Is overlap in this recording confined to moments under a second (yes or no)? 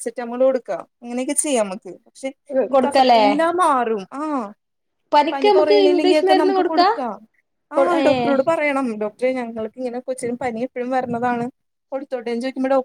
no